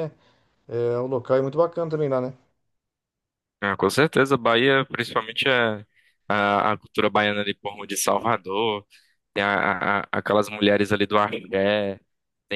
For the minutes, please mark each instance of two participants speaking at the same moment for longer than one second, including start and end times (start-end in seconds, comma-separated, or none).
none